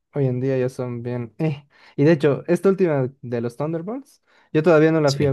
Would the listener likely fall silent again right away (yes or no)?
yes